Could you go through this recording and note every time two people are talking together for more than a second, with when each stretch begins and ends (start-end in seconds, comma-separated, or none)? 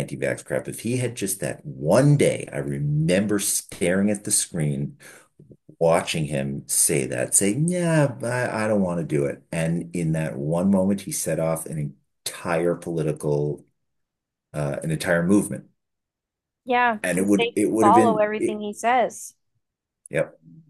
17.0-18.6